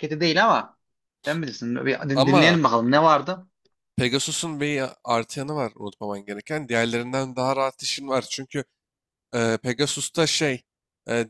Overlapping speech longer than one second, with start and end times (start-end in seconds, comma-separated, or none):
none